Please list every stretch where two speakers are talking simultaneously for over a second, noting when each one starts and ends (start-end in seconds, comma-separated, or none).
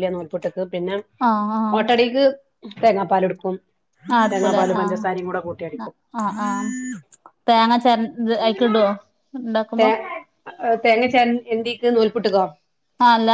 4.3-5.9